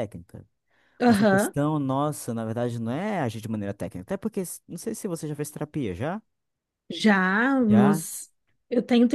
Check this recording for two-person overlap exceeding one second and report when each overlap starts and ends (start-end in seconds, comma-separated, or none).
none